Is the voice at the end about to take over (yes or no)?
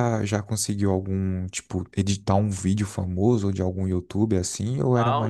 yes